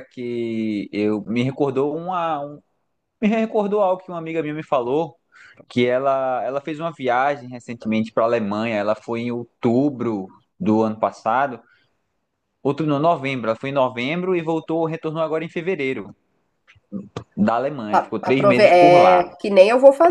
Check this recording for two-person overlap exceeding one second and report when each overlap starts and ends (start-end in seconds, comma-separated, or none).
17.9-19.2